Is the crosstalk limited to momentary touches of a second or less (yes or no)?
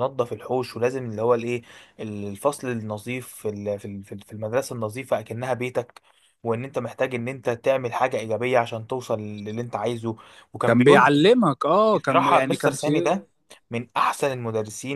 no